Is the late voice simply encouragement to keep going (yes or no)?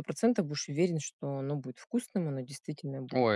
no